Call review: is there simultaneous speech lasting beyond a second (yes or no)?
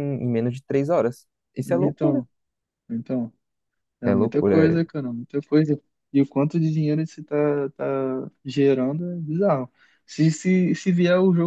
no